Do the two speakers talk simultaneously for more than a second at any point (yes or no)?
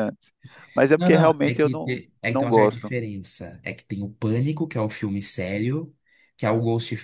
yes